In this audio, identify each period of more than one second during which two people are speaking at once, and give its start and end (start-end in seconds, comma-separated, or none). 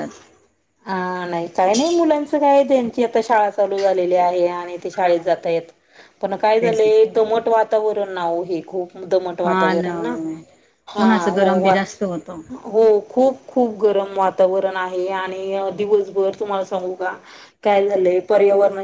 none